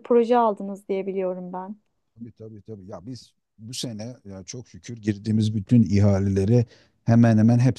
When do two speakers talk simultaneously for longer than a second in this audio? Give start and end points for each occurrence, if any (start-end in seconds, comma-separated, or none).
none